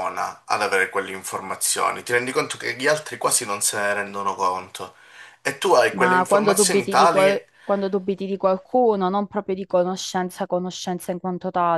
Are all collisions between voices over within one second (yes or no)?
no